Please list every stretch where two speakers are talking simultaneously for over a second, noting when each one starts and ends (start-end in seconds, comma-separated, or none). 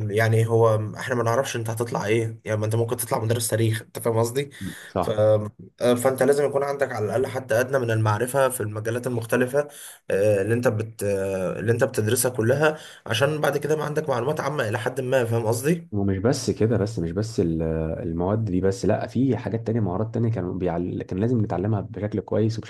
none